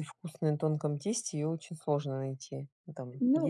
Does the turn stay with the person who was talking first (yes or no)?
no